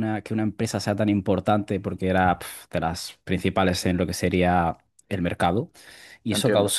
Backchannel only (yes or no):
yes